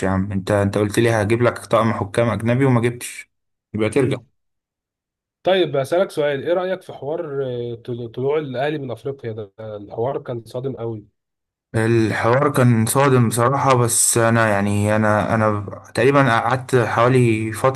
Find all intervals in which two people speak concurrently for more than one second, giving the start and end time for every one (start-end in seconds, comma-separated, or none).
none